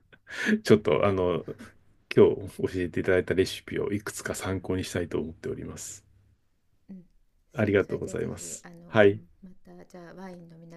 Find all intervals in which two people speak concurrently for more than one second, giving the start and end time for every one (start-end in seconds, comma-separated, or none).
7.5-9.2